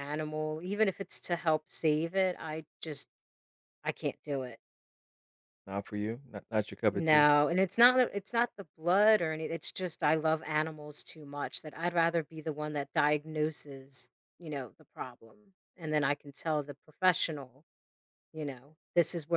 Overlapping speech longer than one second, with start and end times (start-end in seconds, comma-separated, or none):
none